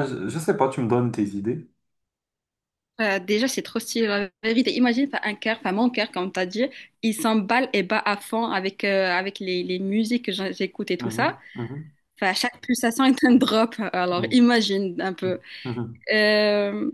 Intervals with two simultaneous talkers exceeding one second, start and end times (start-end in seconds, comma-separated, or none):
none